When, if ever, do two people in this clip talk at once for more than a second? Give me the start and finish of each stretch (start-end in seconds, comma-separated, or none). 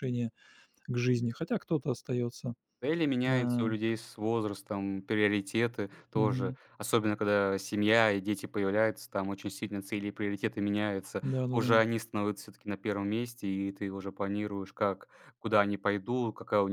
none